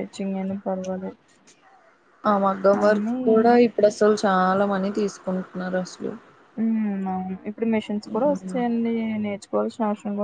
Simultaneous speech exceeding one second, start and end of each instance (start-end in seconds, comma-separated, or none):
none